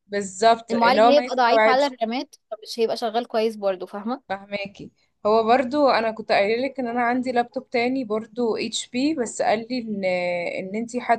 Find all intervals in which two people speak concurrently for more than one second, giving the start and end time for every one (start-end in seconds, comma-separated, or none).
0.7-1.9